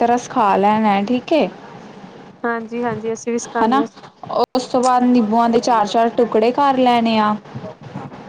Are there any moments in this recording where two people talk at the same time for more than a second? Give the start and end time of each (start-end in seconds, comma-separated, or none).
none